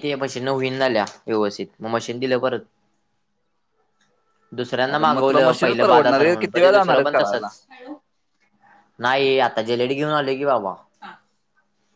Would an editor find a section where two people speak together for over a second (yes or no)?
yes